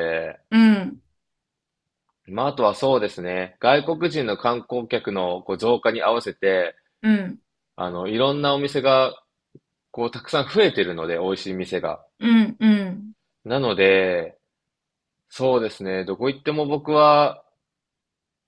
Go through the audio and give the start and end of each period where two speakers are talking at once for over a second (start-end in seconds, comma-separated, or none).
none